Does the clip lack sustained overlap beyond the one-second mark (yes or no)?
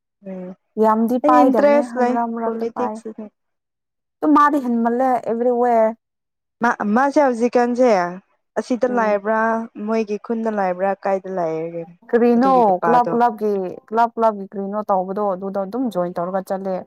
no